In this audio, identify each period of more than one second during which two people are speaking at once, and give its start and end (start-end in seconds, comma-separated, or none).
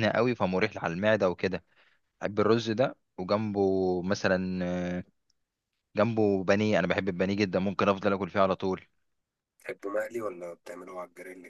none